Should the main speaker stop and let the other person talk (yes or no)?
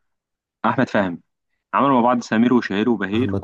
no